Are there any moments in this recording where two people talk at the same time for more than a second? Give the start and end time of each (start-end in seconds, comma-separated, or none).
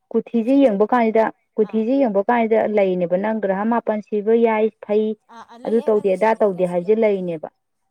5.6-7.4